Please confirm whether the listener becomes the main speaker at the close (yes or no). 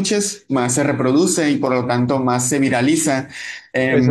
yes